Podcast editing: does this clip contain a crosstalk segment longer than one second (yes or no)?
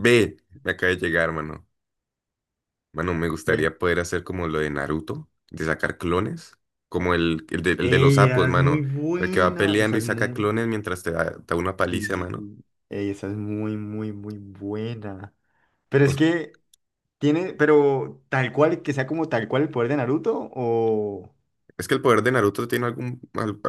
yes